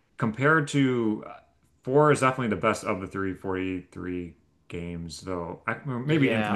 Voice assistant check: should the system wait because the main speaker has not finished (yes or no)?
no